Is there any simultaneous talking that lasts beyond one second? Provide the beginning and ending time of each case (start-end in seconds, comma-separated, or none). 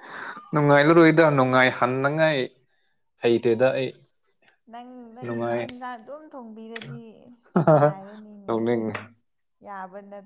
none